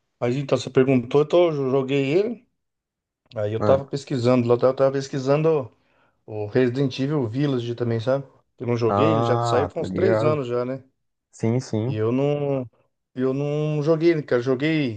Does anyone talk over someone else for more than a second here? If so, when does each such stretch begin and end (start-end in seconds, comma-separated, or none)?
8.9-10.4